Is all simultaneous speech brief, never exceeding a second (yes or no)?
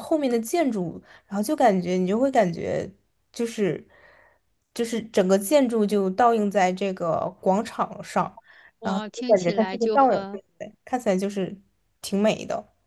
no